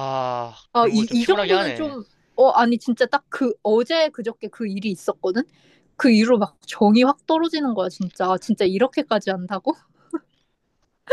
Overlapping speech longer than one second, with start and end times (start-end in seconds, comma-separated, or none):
0.7-1.9